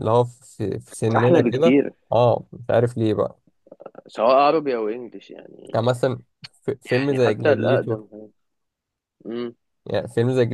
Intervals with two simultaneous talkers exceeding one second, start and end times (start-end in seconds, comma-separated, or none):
6.8-8.0